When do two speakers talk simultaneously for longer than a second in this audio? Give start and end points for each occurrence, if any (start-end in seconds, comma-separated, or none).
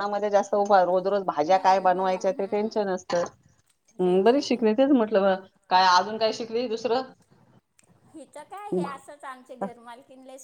1.5-2.8